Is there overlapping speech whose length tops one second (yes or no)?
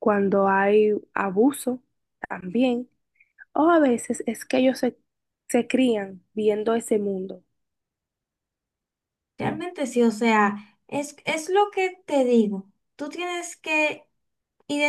no